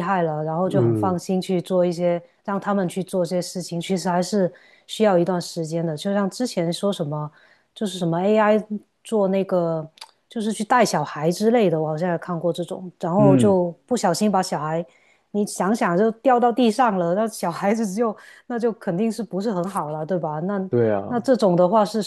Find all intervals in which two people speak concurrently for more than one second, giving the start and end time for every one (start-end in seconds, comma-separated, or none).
none